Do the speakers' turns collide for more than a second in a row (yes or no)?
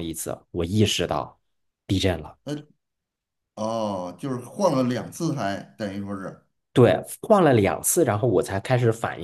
no